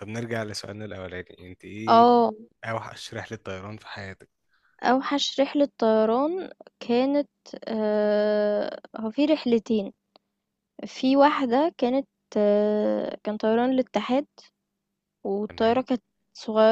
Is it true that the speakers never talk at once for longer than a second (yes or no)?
yes